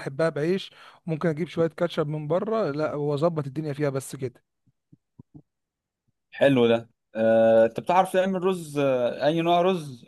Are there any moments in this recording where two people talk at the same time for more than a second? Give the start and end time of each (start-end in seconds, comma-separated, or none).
none